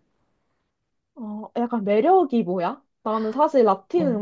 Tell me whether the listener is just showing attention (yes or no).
yes